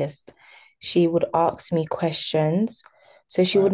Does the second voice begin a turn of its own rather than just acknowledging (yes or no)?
no